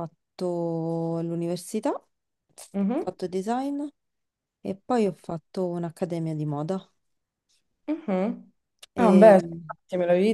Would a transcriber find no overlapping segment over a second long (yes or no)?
yes